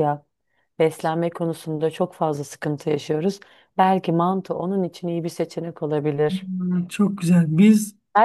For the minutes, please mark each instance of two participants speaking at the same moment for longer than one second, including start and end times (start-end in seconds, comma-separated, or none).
none